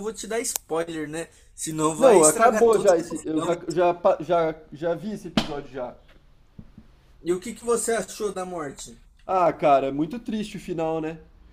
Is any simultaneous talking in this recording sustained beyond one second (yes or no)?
yes